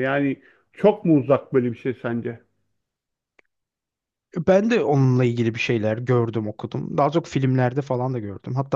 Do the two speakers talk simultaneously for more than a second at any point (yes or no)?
no